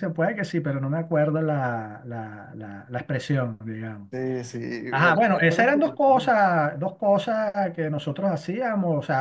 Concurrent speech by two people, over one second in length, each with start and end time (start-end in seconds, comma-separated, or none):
4.9-6.3